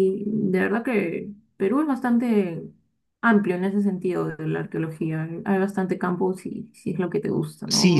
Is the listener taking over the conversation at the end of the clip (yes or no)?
yes